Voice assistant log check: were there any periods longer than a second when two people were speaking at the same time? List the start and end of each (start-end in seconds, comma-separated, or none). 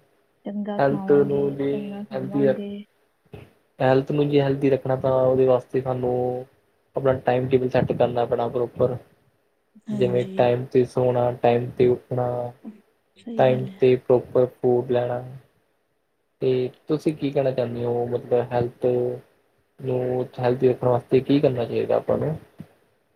0.8-2.6